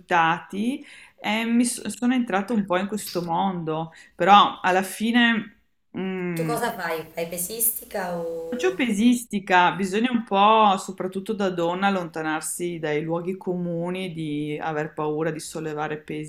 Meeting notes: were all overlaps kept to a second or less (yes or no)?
yes